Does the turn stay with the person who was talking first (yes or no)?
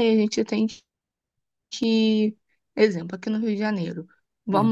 yes